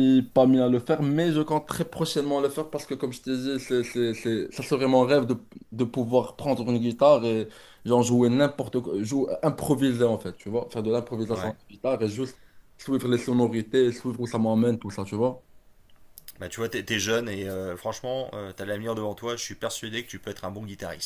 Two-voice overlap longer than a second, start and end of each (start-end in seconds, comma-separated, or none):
none